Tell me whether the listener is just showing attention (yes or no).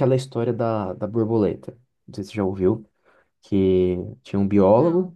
yes